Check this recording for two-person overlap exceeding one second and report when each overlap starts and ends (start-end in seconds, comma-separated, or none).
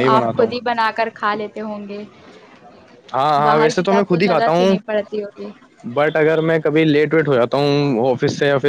3.4-4.8